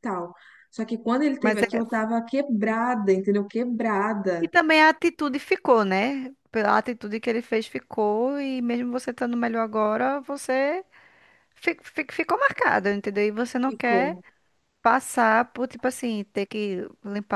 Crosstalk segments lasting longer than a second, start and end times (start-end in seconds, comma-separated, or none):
none